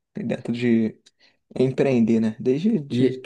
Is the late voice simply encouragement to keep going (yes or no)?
no